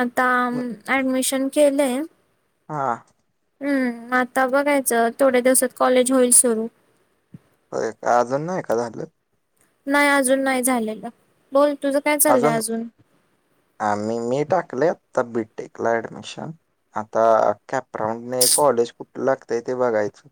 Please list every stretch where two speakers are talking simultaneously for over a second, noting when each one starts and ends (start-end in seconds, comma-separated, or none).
none